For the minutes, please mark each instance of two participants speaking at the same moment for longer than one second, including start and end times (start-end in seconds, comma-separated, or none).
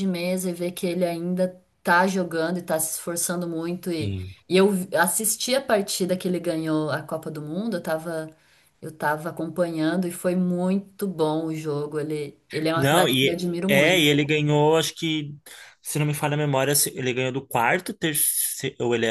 12.8-14.1